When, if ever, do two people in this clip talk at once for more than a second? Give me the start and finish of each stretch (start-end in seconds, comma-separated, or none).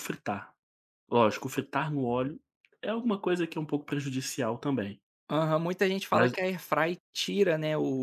none